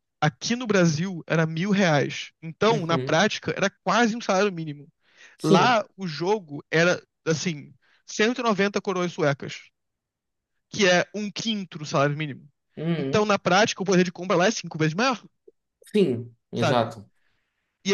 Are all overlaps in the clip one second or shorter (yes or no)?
yes